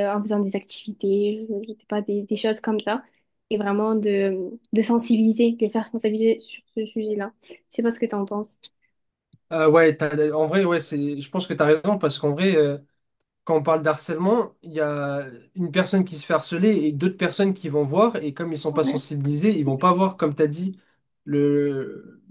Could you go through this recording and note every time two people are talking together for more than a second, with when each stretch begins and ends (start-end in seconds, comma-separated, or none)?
none